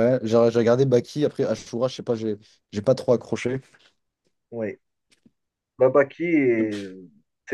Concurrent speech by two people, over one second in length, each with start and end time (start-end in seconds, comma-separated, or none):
none